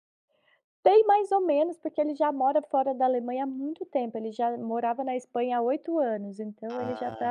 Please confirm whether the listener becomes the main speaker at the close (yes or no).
no